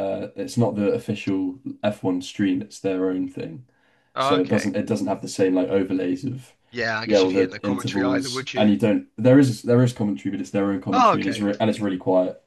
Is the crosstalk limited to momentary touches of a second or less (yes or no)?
no